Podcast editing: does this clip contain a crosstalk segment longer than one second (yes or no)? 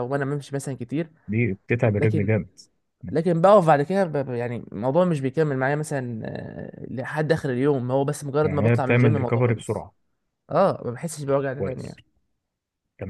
yes